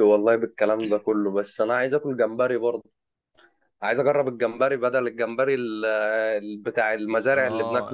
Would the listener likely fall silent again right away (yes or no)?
no